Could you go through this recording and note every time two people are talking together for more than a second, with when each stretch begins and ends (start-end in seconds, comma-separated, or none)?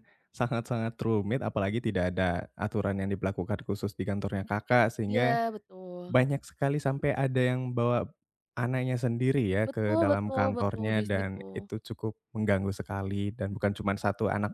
9.7-11.5